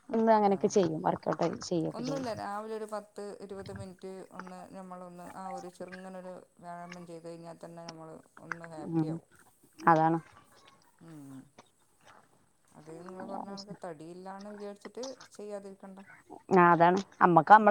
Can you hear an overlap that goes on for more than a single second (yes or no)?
no